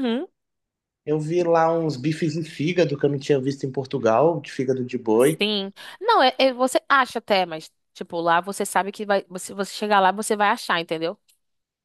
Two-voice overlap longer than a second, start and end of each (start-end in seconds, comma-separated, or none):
none